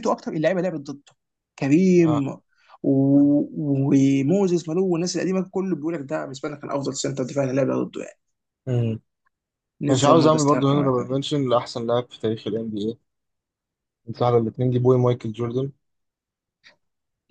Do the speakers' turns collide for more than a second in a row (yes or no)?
yes